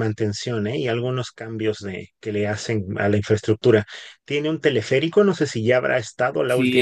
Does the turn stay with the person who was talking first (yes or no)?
no